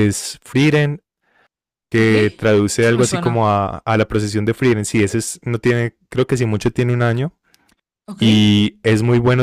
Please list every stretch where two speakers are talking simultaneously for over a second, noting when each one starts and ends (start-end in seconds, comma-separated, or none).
2.0-3.5